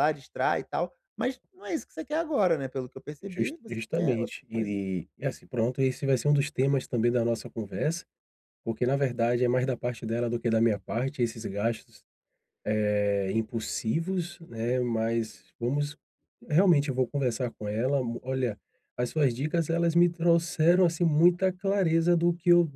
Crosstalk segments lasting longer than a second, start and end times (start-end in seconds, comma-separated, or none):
3.2-4.7